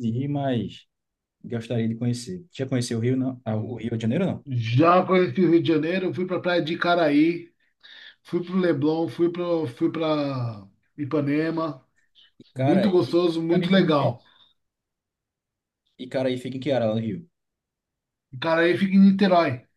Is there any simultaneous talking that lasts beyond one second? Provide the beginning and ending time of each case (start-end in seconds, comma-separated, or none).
12.5-14.1